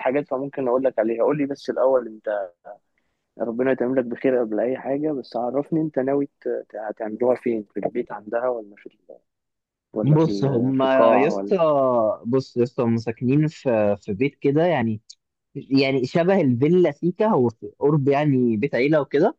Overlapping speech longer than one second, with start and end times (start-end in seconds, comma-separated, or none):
10.0-11.6